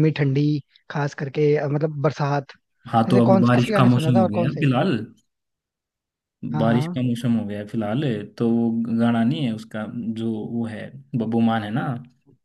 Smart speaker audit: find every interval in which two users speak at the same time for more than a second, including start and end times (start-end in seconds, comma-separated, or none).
3.1-4.7